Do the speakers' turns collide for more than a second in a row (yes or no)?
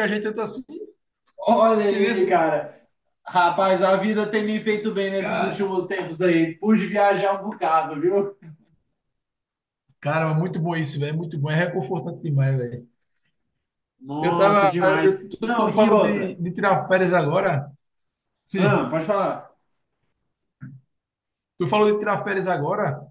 yes